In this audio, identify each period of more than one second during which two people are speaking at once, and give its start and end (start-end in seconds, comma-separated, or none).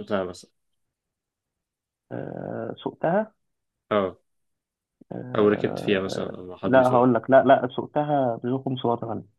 5.4-7.1